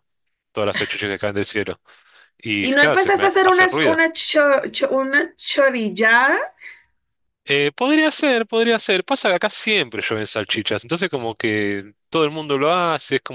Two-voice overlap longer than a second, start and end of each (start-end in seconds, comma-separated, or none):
2.6-4.0